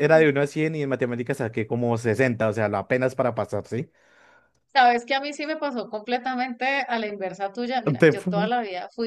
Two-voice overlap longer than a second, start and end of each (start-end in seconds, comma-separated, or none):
none